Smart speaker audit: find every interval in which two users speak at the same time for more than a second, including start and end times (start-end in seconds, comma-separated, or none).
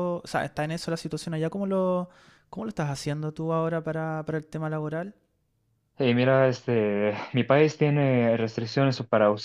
none